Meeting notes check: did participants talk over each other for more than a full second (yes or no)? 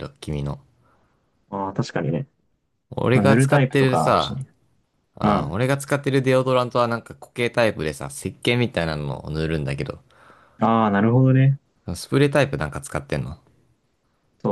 yes